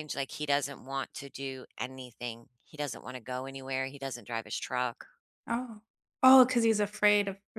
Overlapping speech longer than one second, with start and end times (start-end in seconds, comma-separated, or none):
none